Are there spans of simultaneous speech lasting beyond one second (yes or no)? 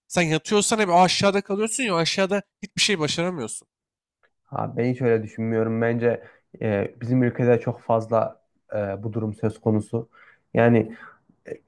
no